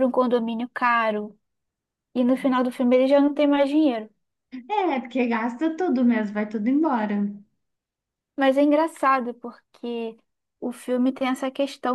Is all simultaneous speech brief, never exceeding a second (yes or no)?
yes